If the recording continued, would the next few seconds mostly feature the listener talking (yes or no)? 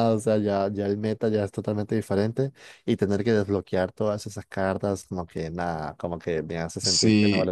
yes